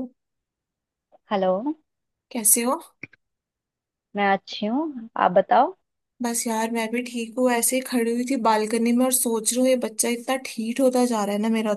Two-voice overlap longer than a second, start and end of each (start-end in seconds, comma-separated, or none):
none